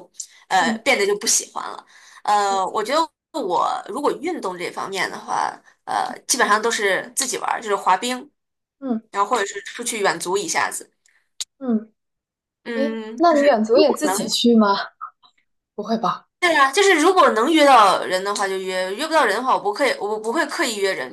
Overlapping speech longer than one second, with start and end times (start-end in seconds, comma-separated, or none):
12.7-14.3